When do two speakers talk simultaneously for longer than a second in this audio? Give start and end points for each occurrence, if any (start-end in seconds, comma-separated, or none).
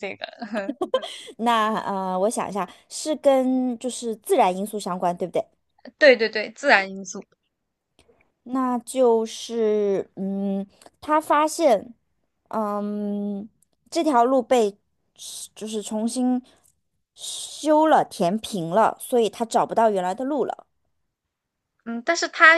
none